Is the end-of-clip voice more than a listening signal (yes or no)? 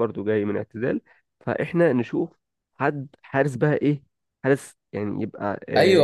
yes